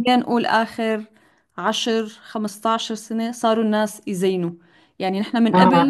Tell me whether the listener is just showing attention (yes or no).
yes